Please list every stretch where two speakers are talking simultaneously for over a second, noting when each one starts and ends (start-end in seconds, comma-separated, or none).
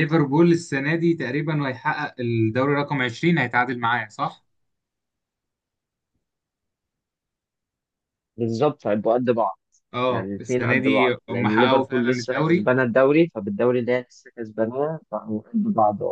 10.1-12.7